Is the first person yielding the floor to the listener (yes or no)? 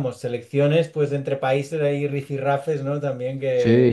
yes